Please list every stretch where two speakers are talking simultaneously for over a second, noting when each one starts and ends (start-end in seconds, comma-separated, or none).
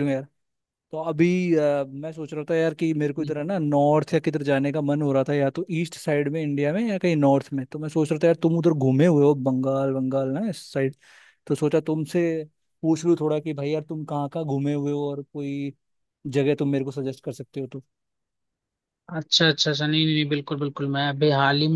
none